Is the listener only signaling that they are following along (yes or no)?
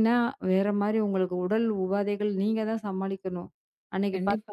no